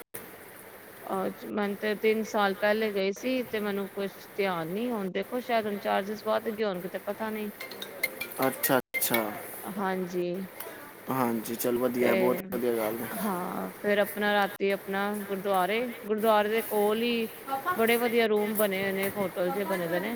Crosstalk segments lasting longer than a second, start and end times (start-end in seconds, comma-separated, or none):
none